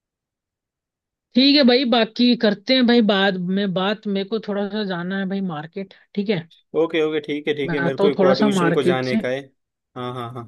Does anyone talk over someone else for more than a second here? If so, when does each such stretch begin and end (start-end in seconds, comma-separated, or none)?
7.7-9.2